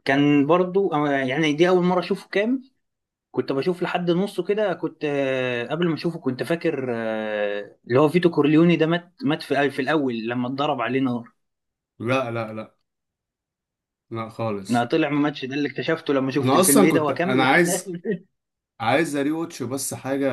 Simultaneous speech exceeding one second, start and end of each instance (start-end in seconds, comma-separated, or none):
16.4-17.9